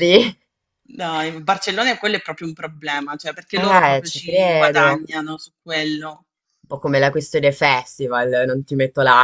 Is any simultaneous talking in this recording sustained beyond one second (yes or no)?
yes